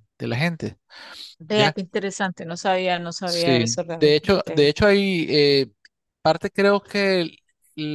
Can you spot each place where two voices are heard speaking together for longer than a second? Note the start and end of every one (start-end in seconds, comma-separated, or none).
3.2-4.7